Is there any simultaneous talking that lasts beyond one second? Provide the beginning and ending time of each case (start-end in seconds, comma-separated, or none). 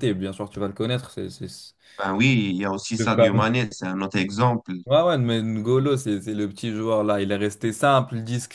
none